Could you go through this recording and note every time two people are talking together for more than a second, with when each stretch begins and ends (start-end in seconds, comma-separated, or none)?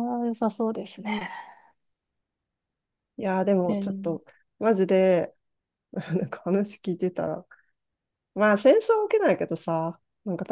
none